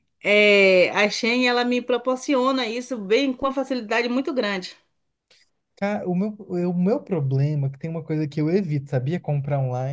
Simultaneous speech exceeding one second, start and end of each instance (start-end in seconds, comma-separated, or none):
none